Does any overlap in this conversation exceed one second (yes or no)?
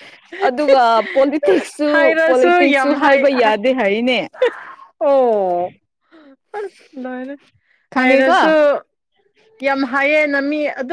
yes